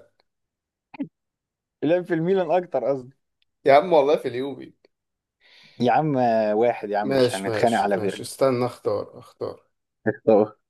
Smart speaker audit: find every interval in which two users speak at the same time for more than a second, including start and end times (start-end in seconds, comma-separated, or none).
7.0-8.3